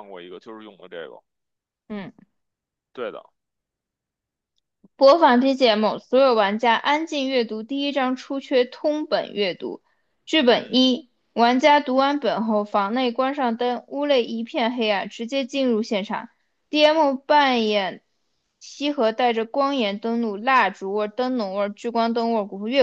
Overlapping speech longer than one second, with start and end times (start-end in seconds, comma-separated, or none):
none